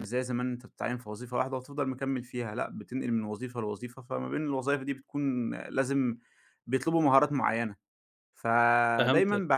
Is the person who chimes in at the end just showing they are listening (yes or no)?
yes